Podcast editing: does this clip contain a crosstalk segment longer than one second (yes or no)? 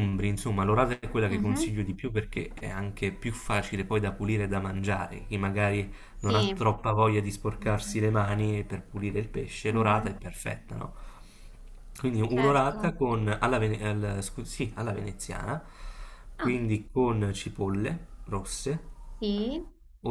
no